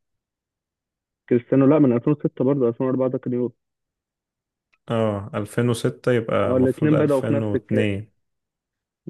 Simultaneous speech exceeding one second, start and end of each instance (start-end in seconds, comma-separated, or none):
6.5-7.9